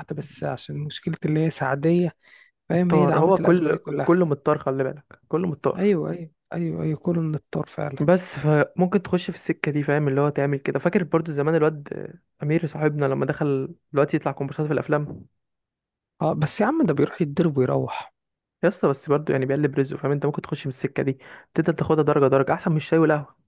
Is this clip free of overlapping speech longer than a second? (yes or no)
no